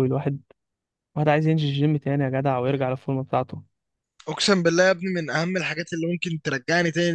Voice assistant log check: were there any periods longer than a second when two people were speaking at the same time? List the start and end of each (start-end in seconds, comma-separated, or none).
none